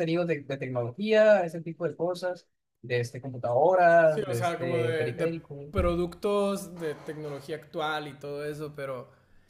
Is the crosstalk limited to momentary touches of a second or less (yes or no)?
no